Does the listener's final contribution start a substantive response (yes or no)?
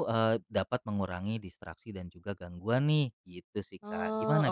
yes